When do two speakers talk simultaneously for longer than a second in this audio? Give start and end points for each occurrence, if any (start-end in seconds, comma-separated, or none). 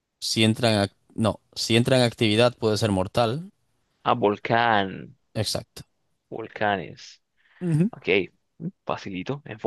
none